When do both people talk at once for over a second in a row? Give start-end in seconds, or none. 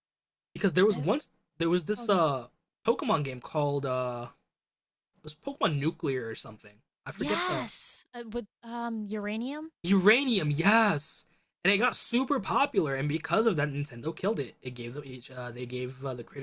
none